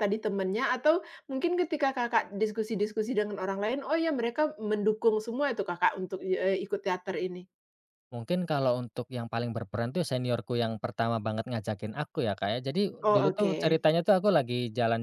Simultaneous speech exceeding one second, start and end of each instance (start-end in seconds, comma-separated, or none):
none